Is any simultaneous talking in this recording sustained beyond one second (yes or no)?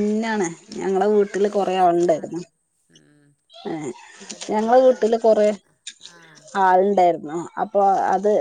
yes